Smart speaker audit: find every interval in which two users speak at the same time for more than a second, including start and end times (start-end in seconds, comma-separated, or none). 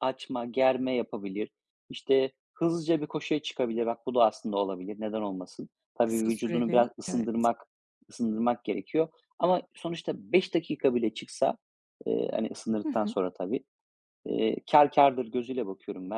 6.0-7.5